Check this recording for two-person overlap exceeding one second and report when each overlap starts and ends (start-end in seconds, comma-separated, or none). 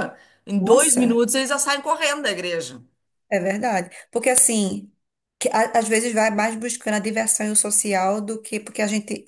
none